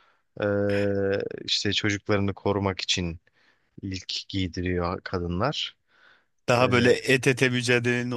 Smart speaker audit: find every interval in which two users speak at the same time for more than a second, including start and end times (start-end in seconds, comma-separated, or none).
none